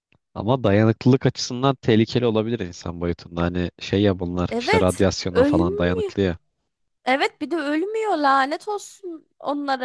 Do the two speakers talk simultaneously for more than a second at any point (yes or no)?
yes